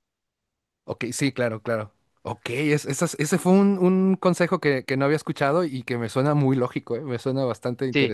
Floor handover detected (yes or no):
yes